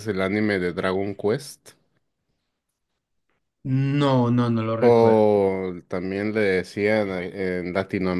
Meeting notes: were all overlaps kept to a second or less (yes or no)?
yes